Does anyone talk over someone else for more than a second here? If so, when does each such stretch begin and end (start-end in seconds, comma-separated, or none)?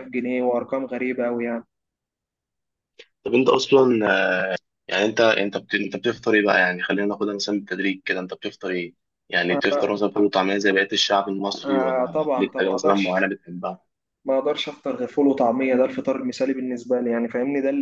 11.7-13.2